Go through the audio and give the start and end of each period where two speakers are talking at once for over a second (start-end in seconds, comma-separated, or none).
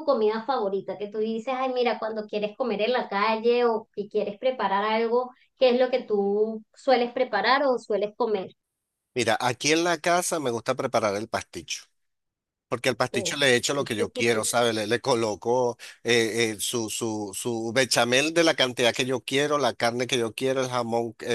none